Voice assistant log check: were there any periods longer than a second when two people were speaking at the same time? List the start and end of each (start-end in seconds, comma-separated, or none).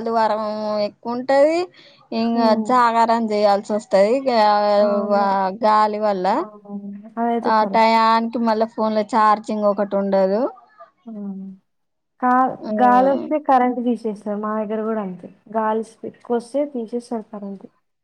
none